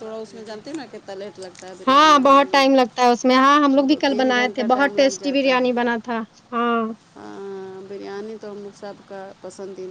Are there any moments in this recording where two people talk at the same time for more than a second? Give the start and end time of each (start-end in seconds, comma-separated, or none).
1.9-5.7